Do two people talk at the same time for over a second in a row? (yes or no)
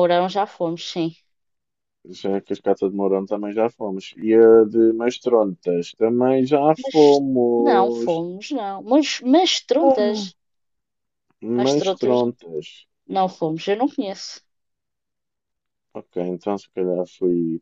yes